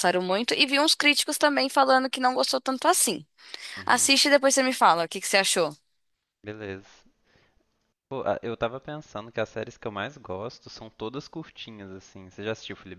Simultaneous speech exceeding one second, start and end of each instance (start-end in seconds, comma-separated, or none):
none